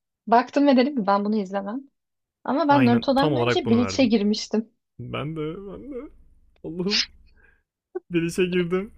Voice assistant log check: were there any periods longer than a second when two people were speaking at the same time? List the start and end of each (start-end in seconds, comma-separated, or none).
2.7-4.1